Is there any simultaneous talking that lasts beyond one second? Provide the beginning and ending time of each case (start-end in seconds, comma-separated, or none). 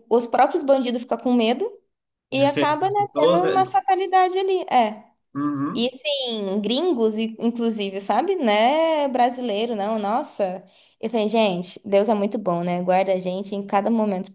2.3-3.8